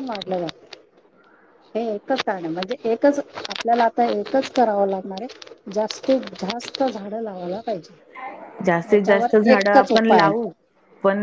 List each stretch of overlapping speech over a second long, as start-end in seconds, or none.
8.9-10.5